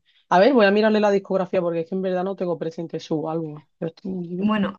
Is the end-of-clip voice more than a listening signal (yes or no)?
yes